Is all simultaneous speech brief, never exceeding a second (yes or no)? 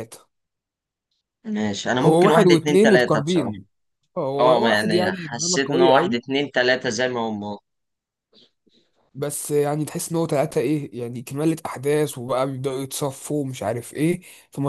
no